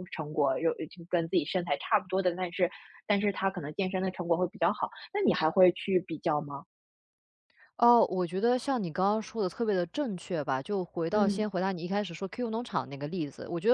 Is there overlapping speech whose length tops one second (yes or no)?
no